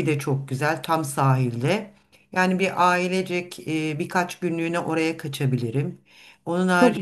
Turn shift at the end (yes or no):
yes